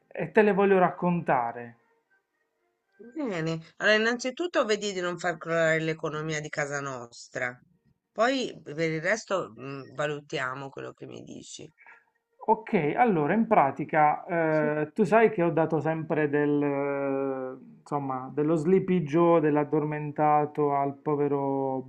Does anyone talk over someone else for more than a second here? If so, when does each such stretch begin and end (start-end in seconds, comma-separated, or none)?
none